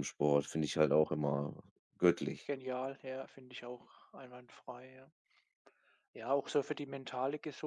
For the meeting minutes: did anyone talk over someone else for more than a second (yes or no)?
no